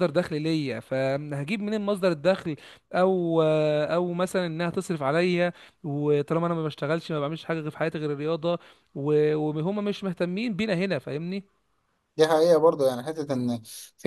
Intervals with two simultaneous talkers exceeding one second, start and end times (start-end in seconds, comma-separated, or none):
none